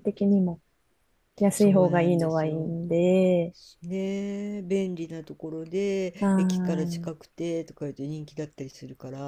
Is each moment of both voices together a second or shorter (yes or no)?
no